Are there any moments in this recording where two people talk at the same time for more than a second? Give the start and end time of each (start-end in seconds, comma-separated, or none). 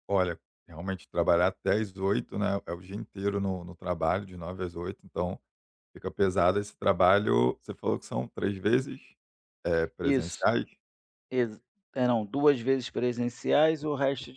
none